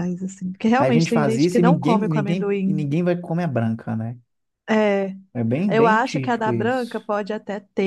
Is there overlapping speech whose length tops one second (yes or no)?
yes